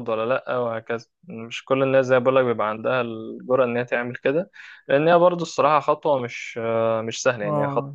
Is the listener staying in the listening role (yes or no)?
yes